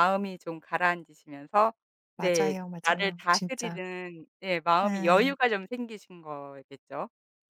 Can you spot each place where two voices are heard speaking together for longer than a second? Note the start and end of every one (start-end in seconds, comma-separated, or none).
2.2-3.8